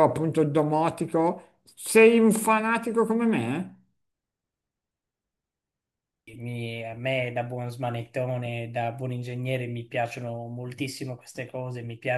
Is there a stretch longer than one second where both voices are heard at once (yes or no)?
no